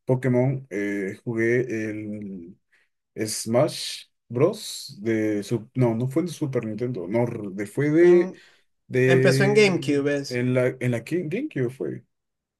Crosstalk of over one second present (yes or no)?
yes